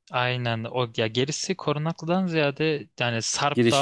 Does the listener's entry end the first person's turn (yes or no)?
no